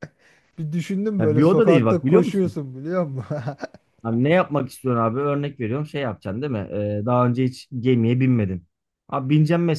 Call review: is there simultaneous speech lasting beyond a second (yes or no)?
yes